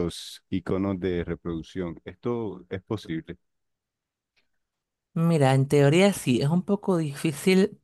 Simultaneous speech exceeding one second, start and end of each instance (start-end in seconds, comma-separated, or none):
none